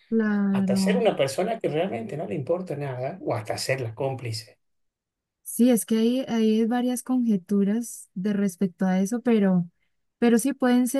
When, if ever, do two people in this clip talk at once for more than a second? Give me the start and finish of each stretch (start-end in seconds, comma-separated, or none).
none